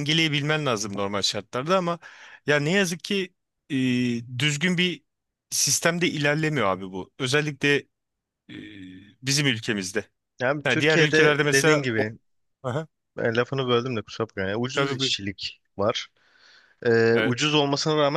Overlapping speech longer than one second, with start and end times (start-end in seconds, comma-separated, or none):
10.6-12.1